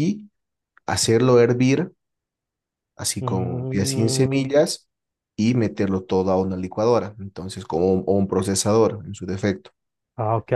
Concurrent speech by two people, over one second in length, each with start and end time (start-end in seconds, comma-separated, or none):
3.2-4.5